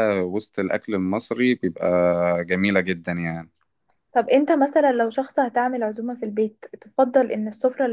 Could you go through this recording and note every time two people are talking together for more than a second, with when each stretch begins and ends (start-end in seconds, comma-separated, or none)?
none